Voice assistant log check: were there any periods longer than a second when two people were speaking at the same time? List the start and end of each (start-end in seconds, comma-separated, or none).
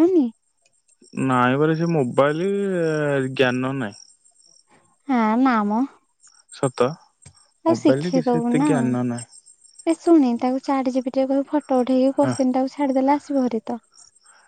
7.7-9.2